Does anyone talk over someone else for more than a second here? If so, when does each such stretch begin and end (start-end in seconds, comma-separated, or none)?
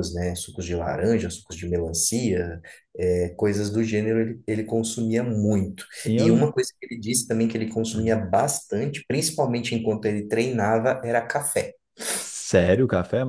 none